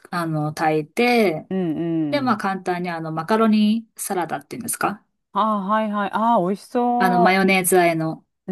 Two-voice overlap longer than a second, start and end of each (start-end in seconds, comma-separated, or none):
none